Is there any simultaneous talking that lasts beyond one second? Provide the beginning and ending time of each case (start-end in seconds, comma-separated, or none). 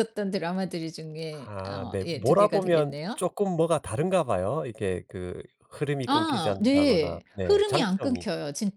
1.4-3.2, 6.1-8.3